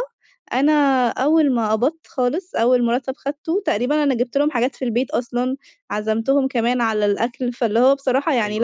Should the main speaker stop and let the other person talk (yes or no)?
yes